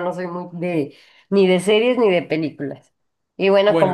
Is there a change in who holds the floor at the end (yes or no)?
no